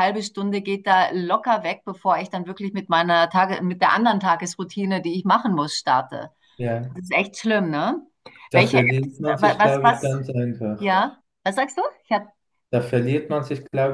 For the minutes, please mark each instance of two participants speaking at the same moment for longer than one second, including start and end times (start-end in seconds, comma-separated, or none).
8.5-10.2